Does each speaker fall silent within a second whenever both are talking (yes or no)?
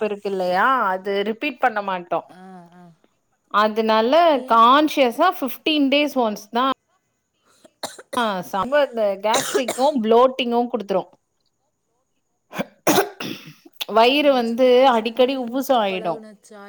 yes